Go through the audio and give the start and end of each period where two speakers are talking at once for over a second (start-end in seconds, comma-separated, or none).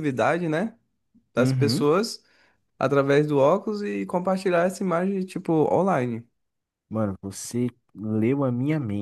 none